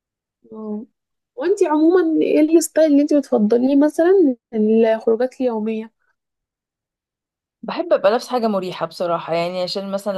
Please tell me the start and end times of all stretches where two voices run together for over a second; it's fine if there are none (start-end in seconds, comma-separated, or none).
none